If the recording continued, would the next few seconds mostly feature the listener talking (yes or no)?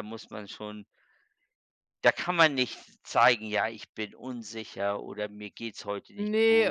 yes